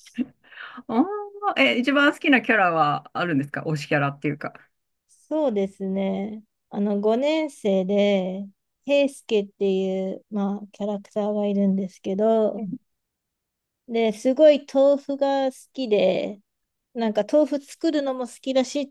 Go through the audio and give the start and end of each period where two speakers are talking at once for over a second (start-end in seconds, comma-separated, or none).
none